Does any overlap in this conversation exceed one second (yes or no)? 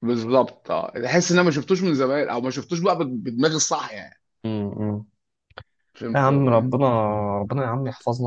no